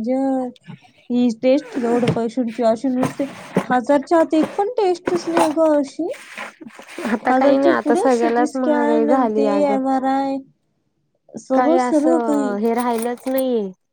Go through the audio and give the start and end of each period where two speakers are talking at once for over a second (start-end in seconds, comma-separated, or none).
7.3-9.8